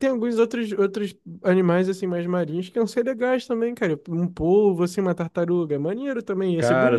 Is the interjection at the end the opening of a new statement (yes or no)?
yes